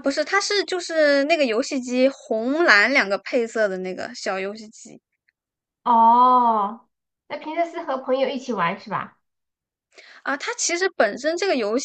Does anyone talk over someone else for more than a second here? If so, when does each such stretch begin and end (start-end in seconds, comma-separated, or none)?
none